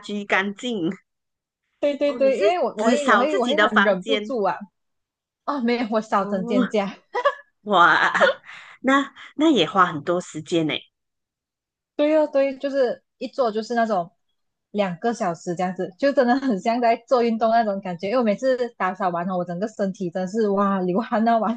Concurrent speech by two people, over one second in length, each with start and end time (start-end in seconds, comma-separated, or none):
2.1-4.3